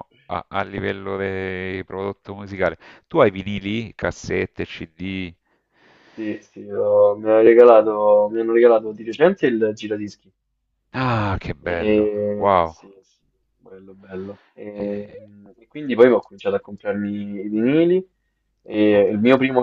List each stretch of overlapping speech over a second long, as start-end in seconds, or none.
none